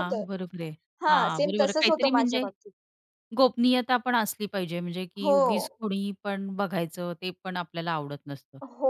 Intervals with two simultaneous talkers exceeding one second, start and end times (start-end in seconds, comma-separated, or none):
1.1-2.4